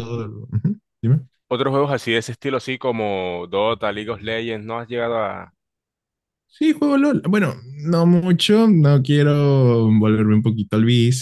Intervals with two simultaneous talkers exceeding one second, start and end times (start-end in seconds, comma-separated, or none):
none